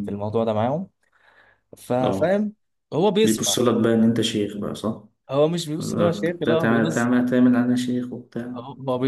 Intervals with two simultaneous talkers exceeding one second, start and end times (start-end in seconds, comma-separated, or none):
5.8-7.1